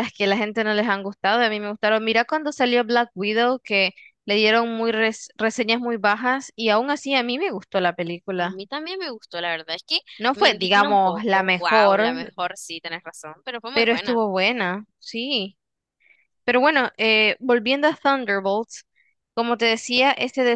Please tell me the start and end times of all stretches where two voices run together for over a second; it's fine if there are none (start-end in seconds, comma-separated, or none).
10.2-12.3